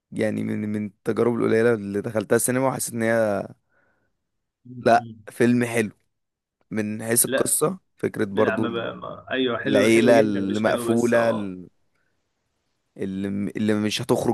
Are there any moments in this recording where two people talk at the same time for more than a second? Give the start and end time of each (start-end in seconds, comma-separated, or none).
9.6-11.5